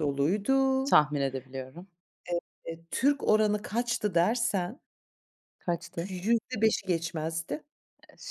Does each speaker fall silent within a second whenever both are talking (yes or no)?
yes